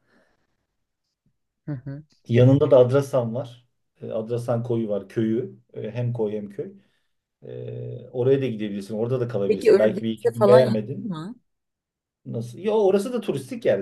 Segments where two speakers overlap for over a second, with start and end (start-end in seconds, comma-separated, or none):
9.4-11.1